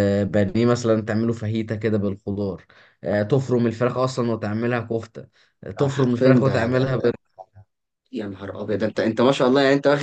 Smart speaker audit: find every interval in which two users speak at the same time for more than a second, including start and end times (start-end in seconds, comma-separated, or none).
5.8-7.1